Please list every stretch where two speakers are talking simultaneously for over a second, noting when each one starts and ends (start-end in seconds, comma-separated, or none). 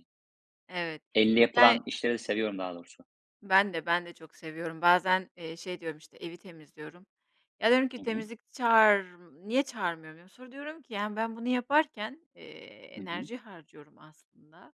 none